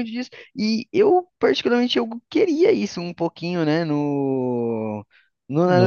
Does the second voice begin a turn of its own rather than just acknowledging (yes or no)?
no